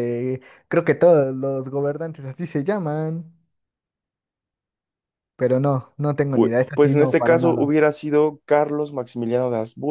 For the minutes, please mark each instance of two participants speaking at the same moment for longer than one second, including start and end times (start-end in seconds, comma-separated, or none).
6.3-7.7